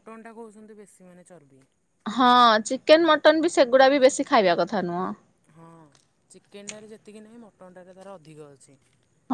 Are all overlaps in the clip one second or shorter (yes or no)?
yes